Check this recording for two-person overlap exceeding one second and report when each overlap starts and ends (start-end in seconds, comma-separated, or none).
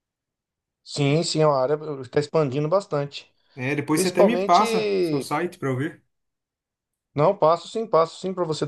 3.9-5.3